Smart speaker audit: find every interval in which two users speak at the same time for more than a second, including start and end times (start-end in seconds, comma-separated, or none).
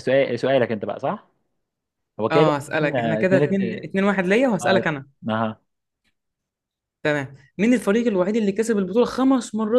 2.3-3.6